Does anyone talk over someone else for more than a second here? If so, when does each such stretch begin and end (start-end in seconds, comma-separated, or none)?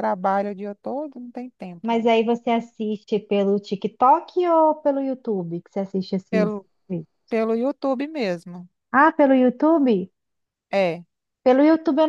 none